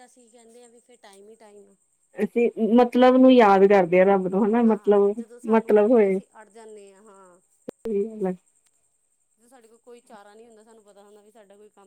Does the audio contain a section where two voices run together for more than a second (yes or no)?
yes